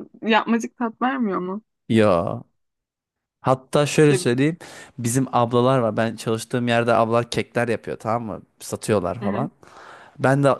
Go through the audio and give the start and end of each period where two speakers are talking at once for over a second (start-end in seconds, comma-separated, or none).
none